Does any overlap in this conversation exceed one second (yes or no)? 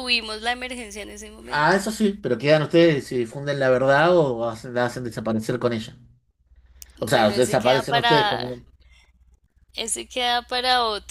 yes